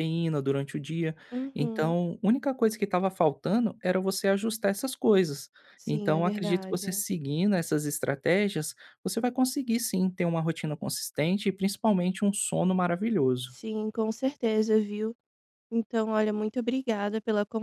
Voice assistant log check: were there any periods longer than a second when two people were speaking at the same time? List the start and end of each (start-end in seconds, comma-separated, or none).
5.8-7.0